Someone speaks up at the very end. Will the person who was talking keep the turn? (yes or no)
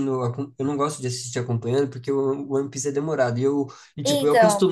yes